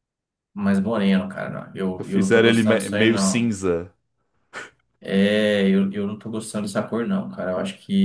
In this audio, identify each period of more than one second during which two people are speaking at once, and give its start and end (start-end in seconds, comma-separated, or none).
2.0-3.5